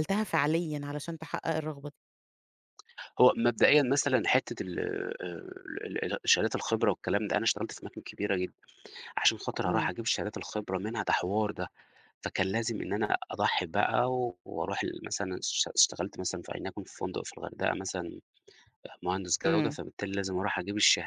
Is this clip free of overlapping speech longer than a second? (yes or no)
yes